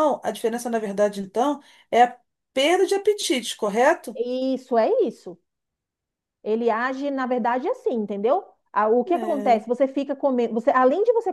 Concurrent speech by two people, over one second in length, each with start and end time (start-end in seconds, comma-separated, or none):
none